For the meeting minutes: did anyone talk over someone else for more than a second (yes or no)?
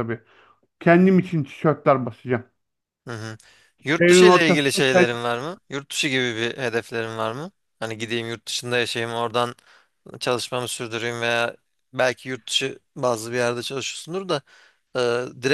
yes